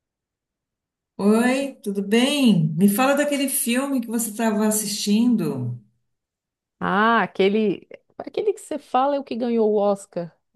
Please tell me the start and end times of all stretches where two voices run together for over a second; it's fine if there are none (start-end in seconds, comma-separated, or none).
none